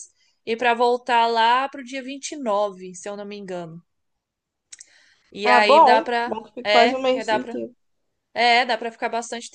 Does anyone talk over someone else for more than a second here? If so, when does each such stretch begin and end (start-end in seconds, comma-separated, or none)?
5.4-7.5